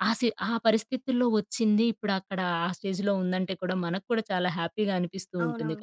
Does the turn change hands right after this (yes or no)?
yes